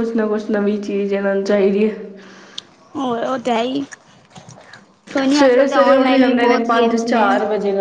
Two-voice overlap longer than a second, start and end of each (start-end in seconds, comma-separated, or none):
5.4-7.3